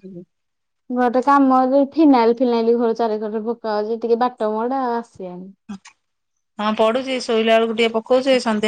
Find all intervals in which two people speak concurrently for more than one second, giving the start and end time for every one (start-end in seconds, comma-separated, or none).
none